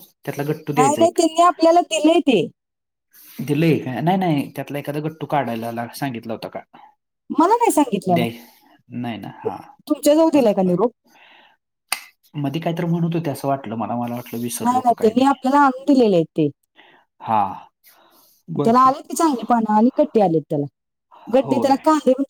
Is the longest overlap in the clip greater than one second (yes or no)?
no